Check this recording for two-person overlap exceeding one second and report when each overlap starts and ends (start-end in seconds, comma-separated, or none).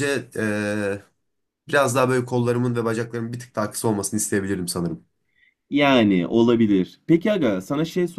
none